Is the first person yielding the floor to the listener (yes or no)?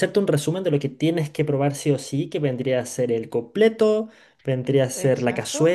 no